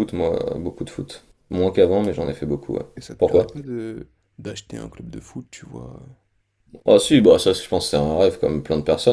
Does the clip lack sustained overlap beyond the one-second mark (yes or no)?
yes